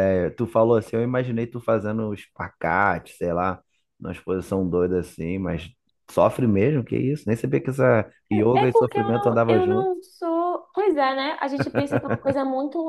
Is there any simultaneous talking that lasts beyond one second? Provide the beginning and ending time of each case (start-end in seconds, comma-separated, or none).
8.5-9.9